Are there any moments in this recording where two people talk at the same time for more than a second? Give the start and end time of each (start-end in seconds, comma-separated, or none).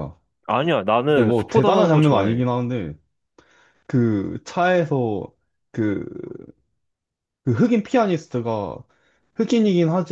1.1-2.5